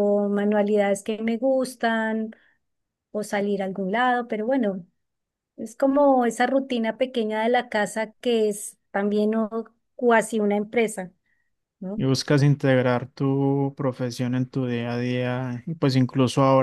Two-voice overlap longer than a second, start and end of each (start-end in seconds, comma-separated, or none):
none